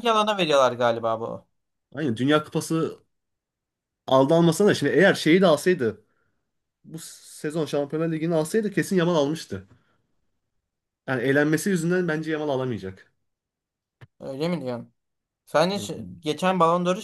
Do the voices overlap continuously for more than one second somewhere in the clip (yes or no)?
no